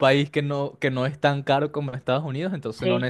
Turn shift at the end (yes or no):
no